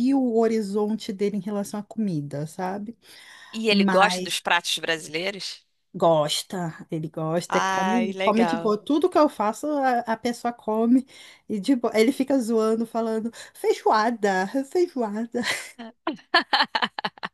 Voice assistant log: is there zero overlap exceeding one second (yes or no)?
no